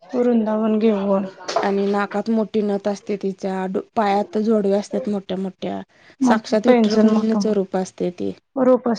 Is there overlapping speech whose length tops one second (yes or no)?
yes